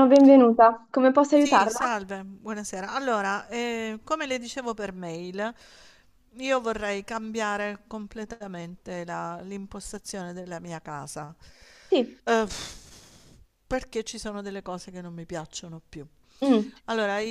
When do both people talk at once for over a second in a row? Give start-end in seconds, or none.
none